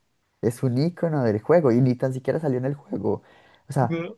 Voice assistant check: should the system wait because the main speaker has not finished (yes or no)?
yes